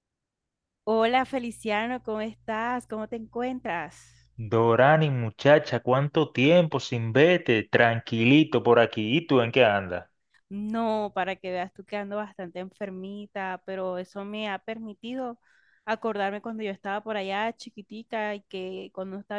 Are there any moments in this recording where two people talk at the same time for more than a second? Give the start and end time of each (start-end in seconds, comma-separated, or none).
none